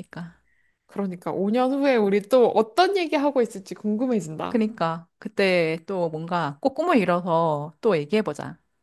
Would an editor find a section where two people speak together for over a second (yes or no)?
no